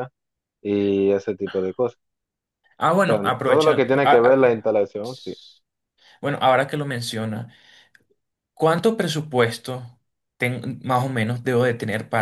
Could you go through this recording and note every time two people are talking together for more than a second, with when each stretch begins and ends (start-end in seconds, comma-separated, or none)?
3.1-4.7